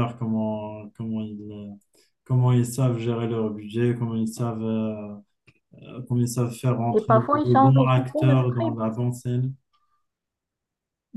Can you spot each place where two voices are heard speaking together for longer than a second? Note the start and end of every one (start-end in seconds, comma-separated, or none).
6.9-8.8